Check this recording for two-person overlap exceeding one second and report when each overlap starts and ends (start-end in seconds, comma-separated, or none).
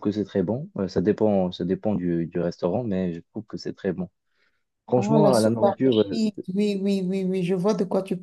5.0-6.2